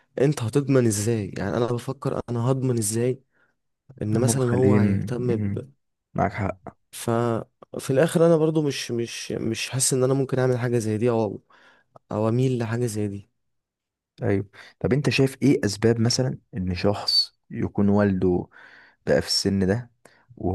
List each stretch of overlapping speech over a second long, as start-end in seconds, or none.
4.2-5.6